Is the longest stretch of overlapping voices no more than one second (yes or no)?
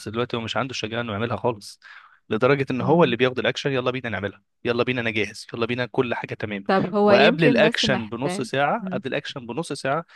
no